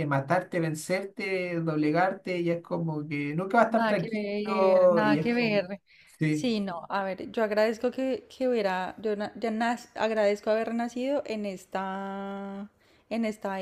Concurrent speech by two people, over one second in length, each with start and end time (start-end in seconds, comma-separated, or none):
3.7-5.6